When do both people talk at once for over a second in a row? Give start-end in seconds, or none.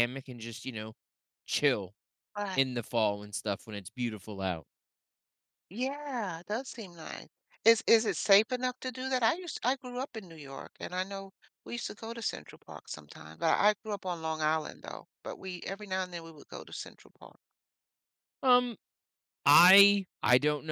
none